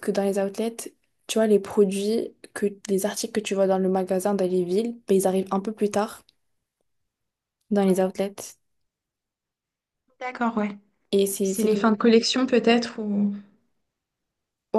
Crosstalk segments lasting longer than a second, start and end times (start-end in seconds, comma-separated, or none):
none